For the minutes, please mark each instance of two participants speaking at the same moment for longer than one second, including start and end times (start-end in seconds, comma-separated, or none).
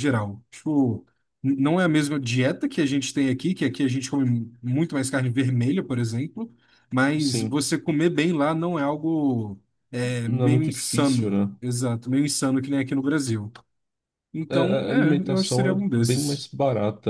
10.2-11.5, 14.5-16.5